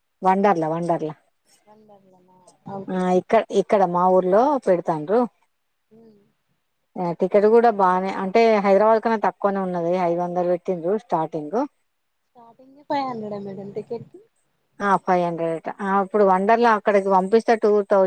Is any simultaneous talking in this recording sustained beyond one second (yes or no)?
no